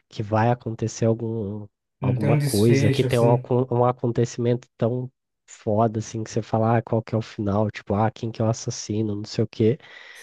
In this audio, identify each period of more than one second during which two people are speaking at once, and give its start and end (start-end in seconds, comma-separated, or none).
2.0-3.5